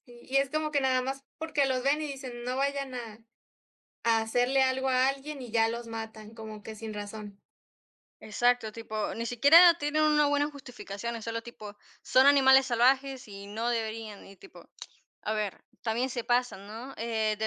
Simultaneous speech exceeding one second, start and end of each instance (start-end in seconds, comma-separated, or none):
none